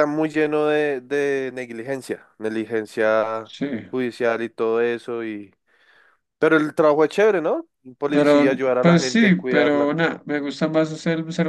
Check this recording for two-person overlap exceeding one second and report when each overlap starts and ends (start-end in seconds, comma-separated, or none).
8.1-9.9